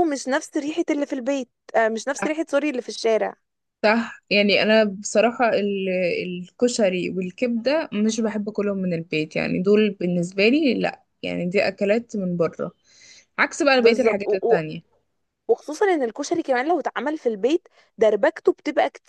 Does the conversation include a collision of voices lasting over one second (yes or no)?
no